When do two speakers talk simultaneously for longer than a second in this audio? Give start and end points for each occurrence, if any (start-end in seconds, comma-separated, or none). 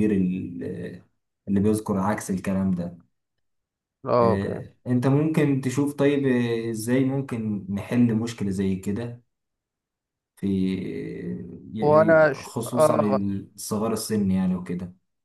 11.8-13.2